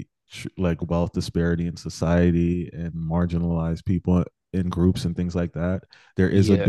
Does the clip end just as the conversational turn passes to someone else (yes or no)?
no